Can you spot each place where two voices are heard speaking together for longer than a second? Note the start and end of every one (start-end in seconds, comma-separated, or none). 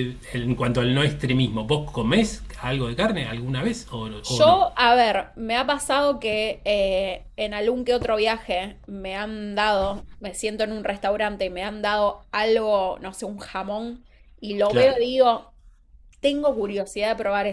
none